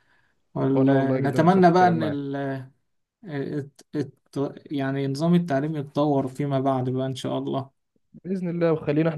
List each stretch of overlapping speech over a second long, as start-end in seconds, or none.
0.7-2.2